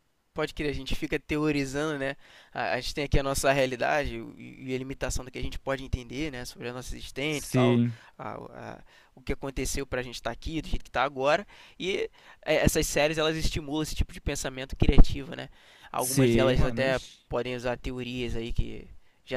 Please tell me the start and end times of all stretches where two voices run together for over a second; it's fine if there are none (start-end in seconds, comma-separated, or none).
16.0-17.2